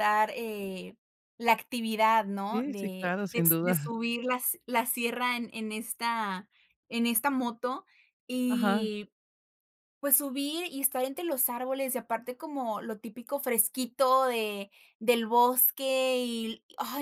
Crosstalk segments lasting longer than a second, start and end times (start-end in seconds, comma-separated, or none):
2.5-3.9